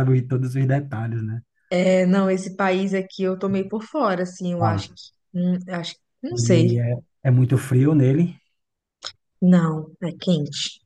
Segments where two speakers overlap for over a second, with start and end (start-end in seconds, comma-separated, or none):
none